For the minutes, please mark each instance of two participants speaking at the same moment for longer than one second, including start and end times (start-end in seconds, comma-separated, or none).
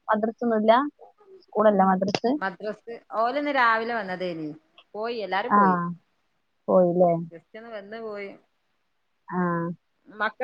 none